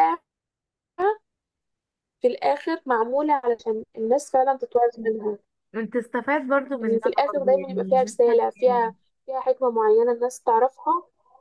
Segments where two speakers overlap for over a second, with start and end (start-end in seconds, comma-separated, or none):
6.8-8.9